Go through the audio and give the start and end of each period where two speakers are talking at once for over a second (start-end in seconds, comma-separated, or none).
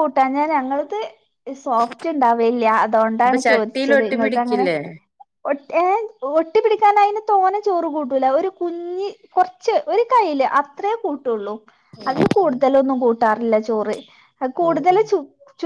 3.2-4.7